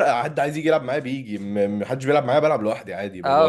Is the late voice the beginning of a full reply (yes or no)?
yes